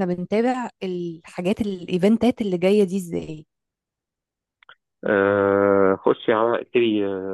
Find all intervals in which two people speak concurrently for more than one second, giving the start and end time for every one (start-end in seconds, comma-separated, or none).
none